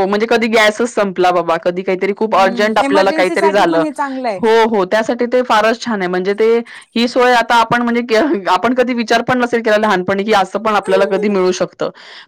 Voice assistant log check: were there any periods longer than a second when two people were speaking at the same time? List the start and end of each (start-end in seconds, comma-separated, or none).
2.2-3.8